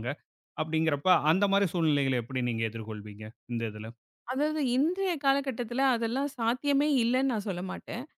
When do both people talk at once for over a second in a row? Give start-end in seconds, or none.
none